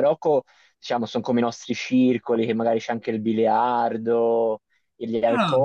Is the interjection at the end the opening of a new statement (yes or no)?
no